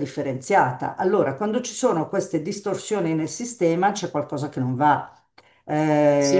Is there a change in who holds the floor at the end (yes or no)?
yes